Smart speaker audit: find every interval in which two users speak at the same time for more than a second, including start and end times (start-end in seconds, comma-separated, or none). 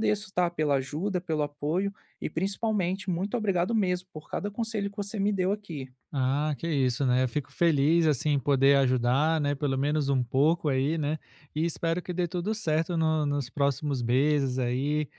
none